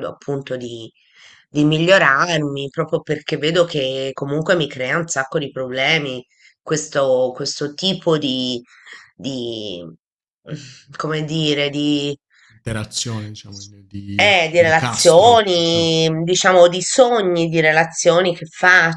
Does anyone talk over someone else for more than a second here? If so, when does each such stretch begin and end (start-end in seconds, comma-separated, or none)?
14.2-15.9